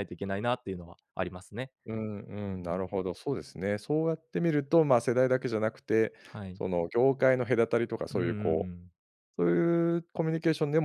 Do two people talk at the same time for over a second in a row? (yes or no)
no